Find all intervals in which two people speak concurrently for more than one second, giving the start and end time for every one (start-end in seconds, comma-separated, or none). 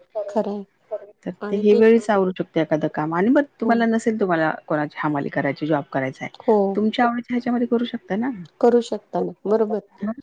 none